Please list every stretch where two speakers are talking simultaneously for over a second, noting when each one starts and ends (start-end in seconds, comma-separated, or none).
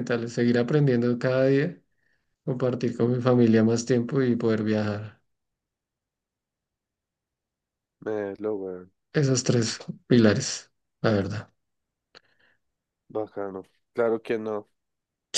none